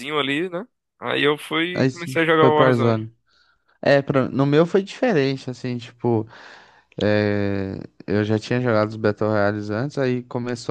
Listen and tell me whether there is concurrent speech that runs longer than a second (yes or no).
yes